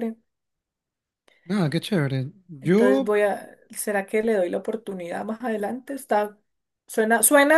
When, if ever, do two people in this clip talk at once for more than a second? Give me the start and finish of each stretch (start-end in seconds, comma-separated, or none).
none